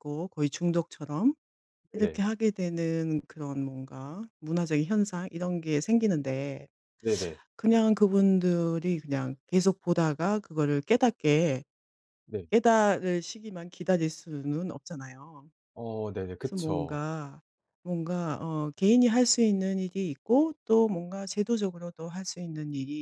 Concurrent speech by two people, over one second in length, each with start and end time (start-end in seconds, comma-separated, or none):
none